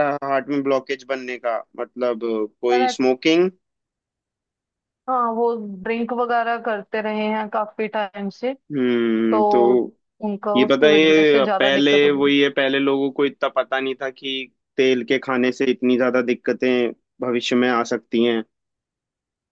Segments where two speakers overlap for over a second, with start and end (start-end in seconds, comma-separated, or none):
10.6-12.3